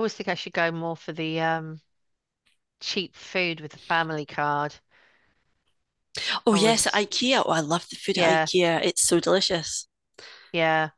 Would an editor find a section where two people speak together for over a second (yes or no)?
no